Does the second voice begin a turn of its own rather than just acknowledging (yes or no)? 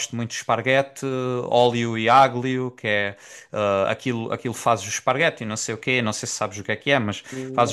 no